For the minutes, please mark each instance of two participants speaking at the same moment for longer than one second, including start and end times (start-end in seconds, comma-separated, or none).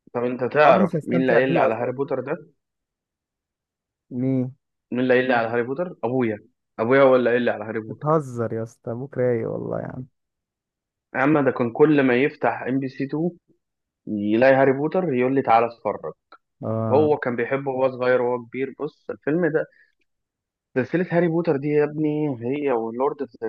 0.6-2.0